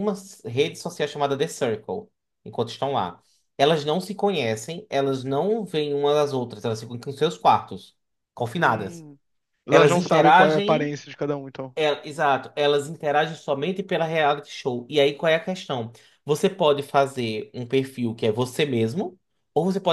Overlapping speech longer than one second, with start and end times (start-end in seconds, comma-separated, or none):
9.7-11.0